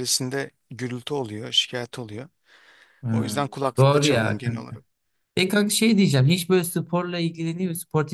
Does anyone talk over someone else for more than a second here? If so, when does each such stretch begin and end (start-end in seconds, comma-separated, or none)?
3.1-4.8